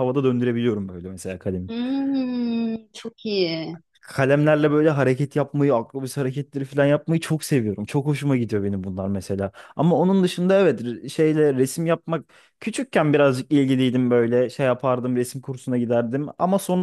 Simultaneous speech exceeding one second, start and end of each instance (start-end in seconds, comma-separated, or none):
none